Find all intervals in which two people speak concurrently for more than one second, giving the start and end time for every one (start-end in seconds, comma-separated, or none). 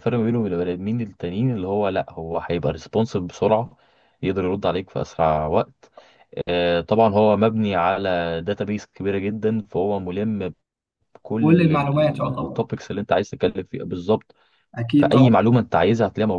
11.4-12.6